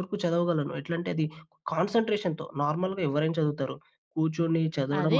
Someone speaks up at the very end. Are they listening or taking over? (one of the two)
taking over